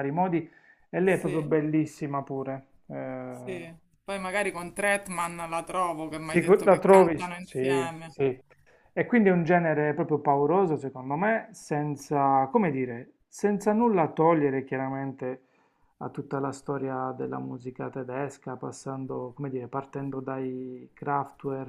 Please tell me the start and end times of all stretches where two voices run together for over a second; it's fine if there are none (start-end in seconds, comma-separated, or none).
6.2-8.1